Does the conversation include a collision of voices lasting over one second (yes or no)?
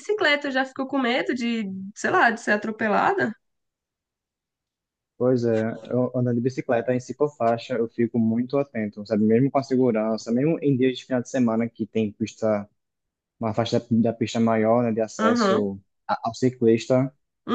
no